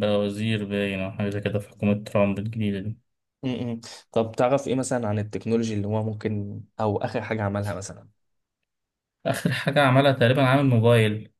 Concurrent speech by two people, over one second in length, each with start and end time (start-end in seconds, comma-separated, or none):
none